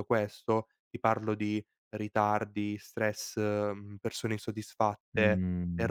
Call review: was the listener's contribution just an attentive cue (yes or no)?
yes